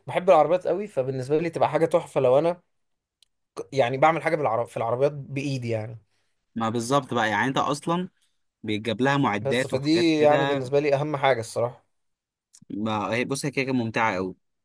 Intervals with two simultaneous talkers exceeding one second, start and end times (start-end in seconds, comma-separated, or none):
9.4-10.7